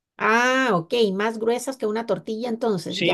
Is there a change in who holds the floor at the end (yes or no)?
yes